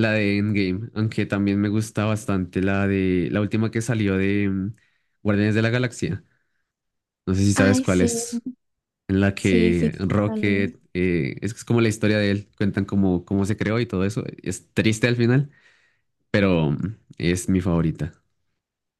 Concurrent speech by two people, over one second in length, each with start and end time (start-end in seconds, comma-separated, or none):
9.4-10.8